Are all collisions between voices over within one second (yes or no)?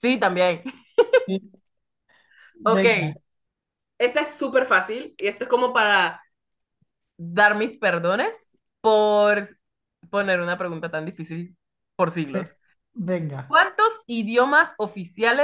yes